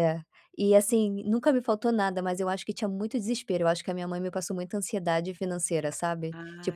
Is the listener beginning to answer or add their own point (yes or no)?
no